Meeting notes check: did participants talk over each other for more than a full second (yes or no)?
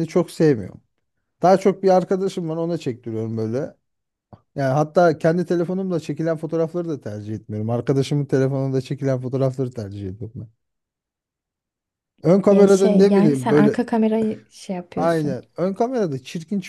yes